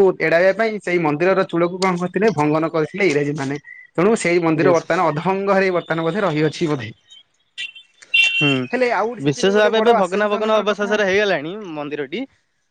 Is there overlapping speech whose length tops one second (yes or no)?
yes